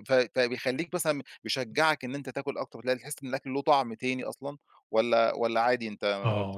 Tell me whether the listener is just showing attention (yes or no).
no